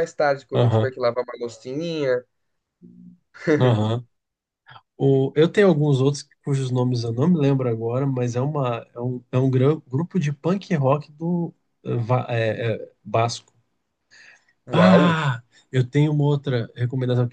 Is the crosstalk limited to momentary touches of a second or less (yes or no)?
yes